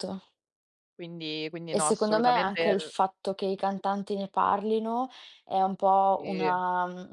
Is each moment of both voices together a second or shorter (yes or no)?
no